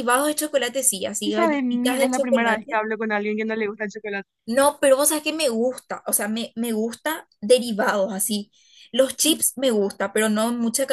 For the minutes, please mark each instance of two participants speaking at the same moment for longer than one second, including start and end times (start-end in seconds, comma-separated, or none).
1.2-2.8